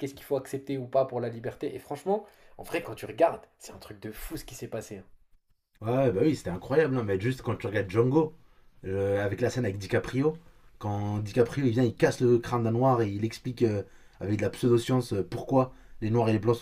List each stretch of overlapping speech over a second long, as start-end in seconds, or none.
none